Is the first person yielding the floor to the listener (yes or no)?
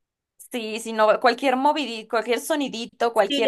yes